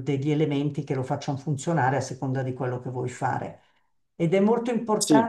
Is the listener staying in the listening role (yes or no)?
yes